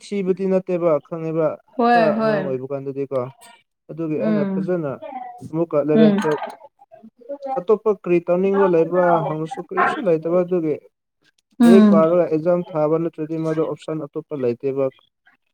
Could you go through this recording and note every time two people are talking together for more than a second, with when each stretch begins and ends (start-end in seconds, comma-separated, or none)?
none